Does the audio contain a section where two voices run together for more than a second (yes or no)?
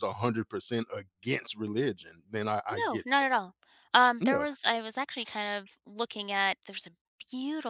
no